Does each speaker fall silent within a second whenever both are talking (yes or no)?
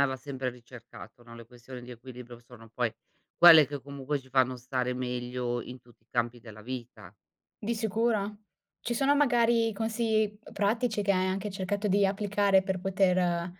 yes